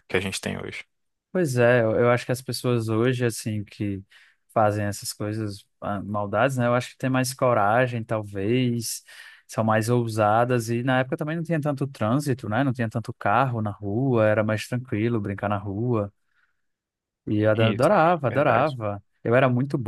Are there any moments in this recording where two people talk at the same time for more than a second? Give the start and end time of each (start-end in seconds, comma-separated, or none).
17.6-18.8